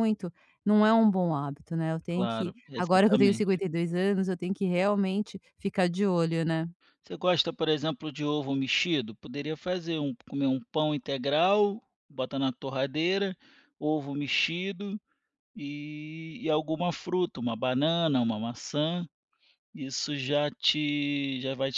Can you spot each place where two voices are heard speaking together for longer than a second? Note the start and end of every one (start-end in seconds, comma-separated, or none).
2.1-3.6